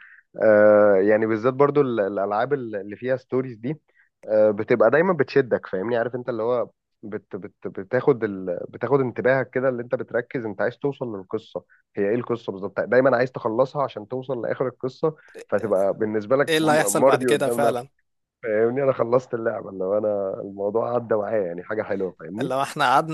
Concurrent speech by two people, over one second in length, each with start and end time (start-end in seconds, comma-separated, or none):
16.5-17.9